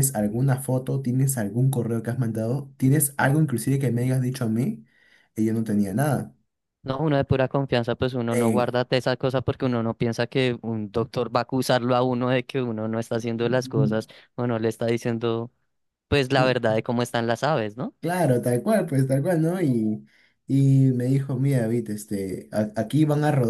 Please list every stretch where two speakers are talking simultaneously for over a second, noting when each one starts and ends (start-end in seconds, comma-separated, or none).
none